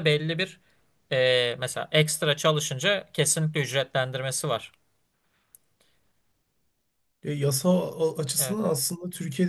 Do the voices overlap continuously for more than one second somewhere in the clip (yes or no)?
no